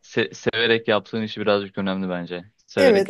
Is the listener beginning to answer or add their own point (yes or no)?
yes